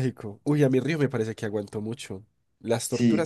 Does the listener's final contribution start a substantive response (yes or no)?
yes